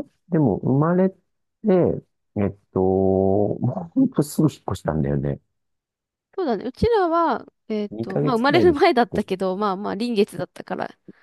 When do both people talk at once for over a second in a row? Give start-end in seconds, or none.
7.9-9.3